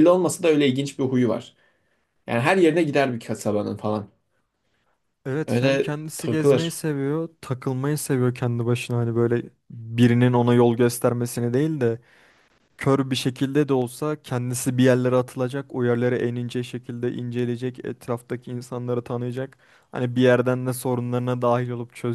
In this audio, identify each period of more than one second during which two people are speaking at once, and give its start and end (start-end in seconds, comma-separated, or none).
5.5-6.8